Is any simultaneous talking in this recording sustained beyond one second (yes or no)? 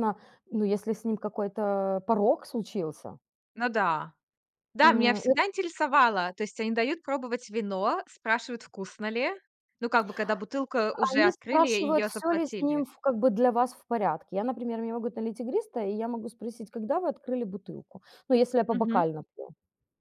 yes